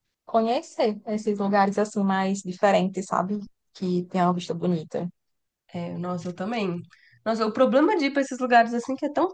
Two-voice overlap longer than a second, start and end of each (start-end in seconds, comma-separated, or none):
none